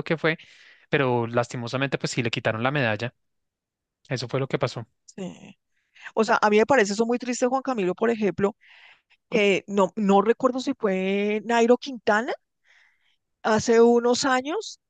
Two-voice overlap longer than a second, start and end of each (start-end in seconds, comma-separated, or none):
none